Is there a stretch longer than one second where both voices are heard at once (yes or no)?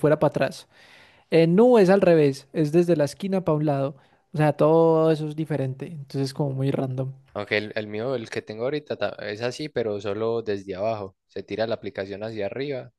no